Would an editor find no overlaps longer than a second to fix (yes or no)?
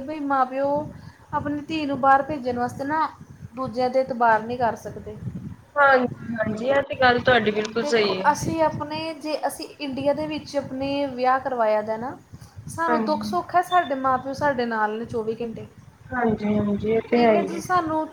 yes